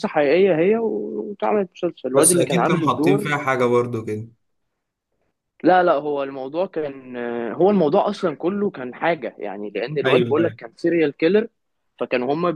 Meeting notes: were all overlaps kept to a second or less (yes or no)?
no